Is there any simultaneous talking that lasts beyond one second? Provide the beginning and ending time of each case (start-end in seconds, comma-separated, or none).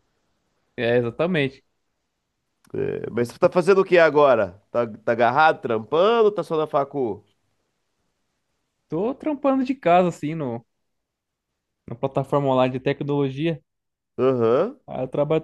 none